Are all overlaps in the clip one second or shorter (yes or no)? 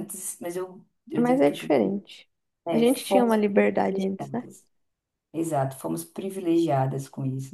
no